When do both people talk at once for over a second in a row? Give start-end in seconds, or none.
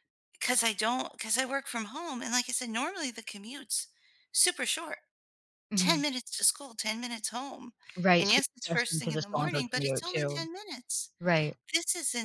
8.2-10.5